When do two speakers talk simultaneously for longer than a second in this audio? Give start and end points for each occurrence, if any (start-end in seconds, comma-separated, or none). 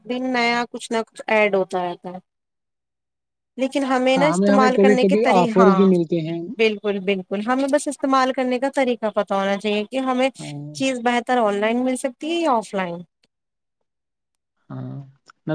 4.2-5.9